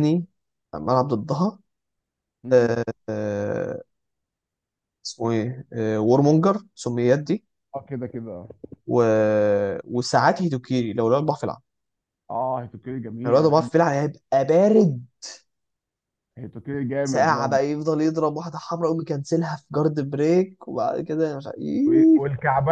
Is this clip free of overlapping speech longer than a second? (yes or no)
yes